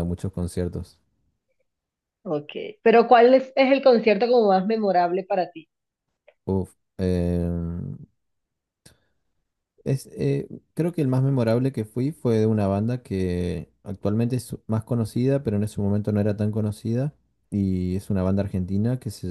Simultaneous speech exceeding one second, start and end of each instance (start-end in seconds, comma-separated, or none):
none